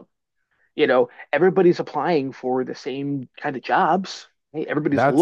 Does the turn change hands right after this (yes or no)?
yes